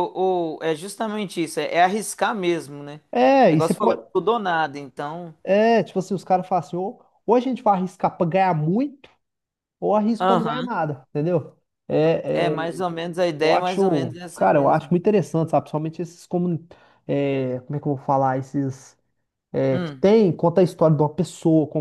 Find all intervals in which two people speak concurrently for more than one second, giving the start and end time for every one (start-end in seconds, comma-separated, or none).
13.4-14.9